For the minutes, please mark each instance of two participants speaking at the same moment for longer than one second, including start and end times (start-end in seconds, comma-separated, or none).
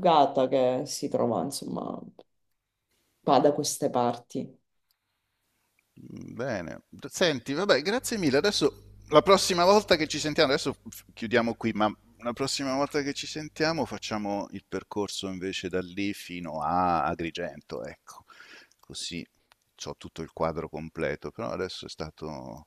none